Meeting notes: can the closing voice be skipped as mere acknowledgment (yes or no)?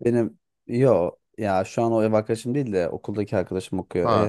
no